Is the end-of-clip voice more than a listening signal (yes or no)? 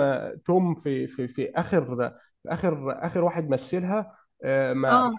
no